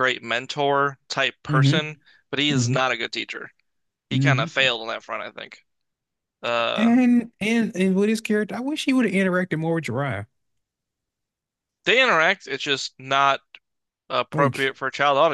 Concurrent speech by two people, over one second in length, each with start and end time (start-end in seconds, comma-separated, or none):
none